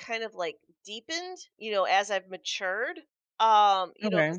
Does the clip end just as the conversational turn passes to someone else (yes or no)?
no